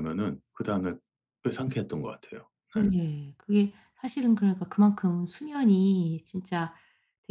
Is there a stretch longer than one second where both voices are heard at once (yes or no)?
no